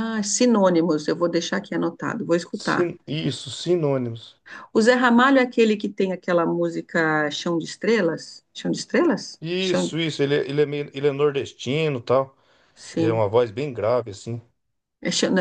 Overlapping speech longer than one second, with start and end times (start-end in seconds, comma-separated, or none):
none